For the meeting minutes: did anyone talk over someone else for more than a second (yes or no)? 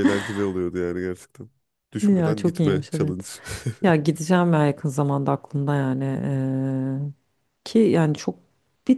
yes